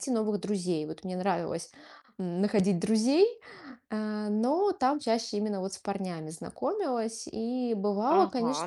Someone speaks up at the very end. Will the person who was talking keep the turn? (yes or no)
no